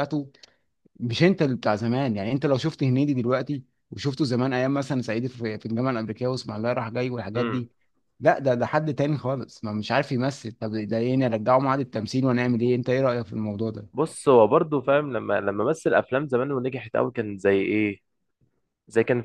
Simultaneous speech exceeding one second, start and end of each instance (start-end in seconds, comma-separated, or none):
none